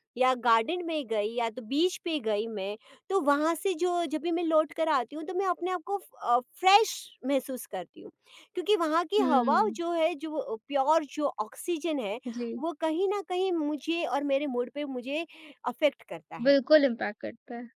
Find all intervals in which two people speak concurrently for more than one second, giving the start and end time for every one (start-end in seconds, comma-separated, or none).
none